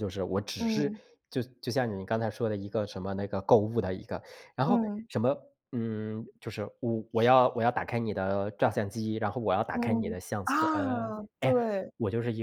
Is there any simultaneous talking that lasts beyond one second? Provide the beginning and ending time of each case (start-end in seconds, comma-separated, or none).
9.7-11.6